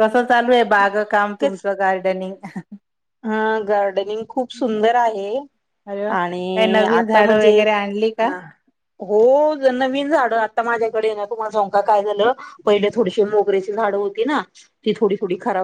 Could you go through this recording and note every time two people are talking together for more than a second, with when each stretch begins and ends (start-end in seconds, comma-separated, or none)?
6.2-7.6